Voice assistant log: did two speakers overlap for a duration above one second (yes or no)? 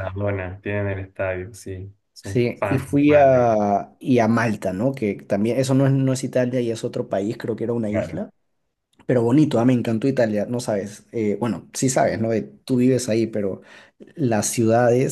yes